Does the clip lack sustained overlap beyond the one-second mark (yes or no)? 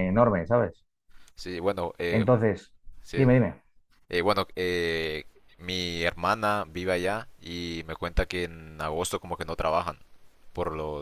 yes